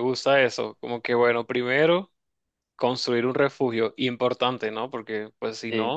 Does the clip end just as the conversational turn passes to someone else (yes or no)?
no